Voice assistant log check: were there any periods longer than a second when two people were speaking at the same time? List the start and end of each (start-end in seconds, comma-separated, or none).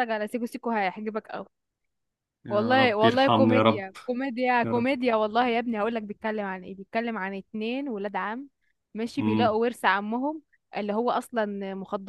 2.5-3.9